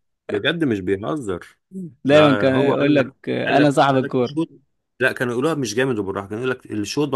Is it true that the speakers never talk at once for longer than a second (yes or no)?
no